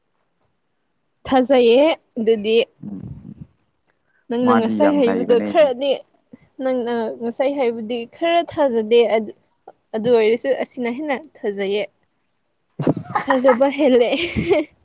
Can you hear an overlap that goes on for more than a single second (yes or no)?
yes